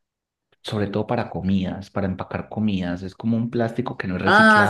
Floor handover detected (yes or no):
yes